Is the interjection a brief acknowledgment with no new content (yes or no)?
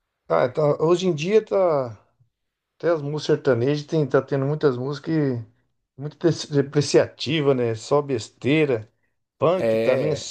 yes